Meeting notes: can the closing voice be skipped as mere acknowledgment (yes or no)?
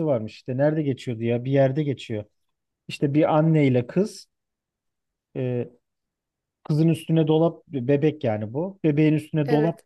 yes